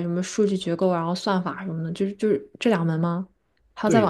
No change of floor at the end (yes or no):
no